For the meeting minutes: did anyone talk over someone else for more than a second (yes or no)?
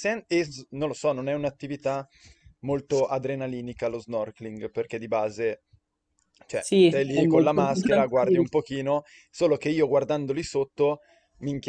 yes